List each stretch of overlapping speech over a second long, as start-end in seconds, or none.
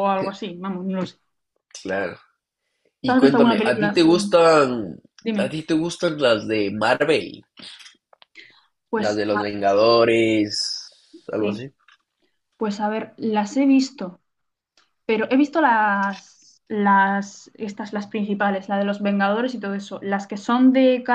3.0-4.4